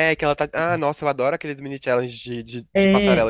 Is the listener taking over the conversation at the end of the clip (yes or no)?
yes